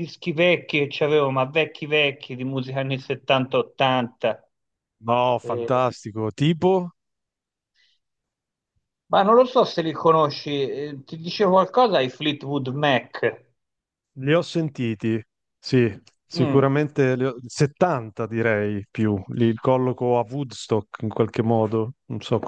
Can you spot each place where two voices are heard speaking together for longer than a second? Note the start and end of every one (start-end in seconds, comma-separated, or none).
none